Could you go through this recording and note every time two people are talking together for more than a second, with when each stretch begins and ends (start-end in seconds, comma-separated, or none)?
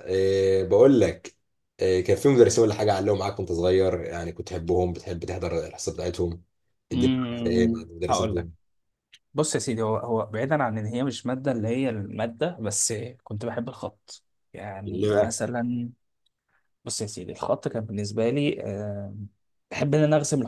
6.9-8.5